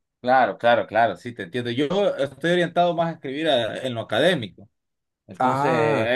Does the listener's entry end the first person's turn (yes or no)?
no